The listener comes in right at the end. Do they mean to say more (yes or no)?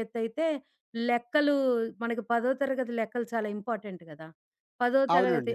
no